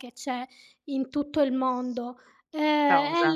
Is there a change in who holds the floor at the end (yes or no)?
no